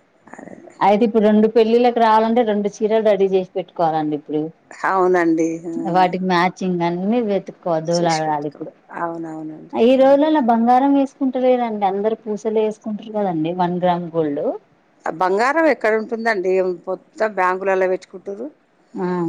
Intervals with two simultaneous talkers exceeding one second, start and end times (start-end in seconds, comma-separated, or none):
none